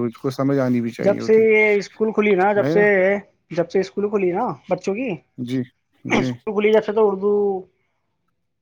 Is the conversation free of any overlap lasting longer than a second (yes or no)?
yes